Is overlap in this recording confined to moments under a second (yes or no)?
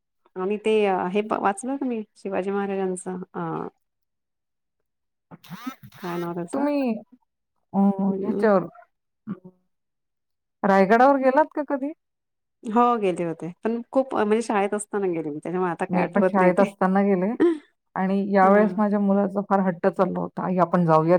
yes